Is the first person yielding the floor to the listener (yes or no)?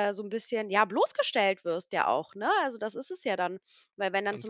no